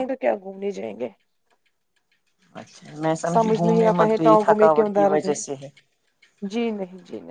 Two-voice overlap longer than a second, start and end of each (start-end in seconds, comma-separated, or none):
3.3-5.3